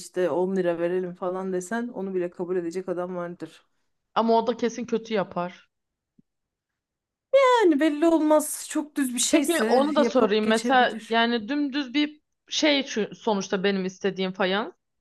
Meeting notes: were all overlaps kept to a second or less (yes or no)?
no